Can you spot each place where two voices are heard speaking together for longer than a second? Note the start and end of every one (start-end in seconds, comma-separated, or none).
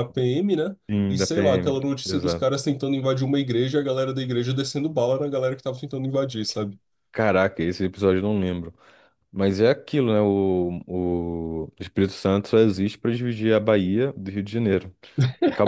0.9-2.5